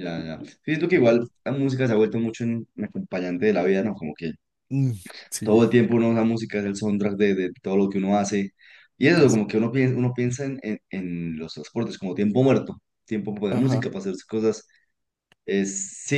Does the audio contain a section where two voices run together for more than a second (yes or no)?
no